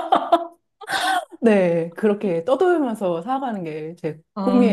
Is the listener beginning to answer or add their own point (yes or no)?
yes